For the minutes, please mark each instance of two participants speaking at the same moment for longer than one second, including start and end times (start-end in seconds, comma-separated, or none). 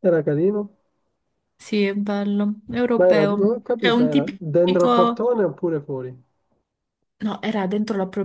3.0-5.3